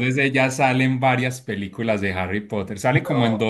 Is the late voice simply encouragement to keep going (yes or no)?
yes